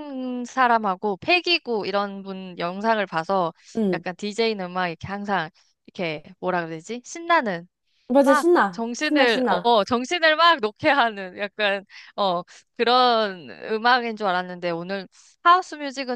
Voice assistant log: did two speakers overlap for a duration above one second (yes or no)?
yes